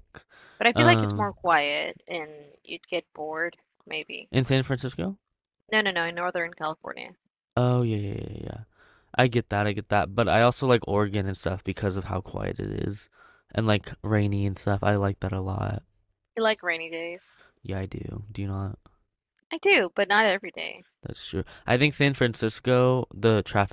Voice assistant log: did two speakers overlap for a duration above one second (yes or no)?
no